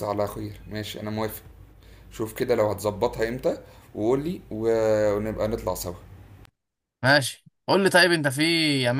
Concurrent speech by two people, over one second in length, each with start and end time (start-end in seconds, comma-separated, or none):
none